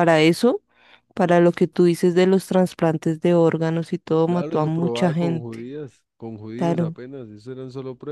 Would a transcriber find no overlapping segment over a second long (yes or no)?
no